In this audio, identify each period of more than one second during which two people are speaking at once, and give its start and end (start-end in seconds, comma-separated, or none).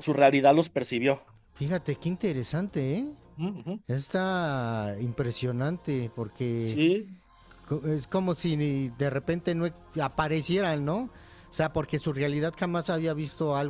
none